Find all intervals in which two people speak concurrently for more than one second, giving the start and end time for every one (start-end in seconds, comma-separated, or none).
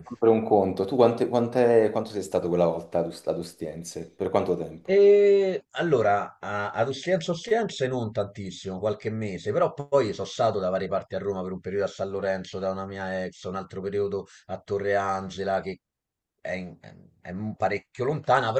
none